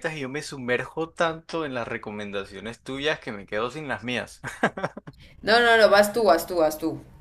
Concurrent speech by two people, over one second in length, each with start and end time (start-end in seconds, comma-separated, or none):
none